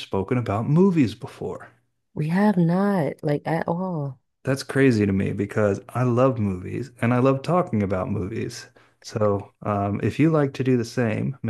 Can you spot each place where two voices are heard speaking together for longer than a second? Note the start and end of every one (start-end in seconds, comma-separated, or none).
none